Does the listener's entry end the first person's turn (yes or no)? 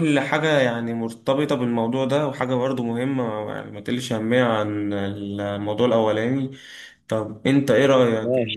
no